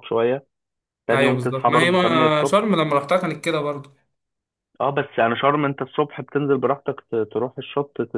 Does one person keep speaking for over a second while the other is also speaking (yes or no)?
yes